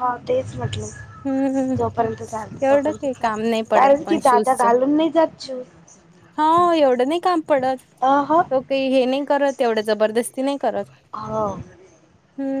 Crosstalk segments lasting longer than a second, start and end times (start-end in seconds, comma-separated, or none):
2.6-4.6